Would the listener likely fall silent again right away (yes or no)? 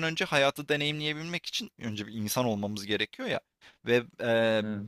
yes